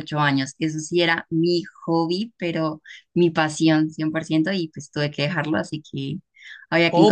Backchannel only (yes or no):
no